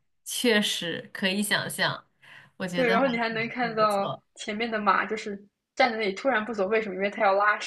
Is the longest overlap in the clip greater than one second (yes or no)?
yes